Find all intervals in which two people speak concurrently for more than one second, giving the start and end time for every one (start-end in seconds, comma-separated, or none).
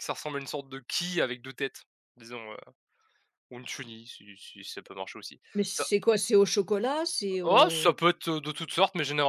none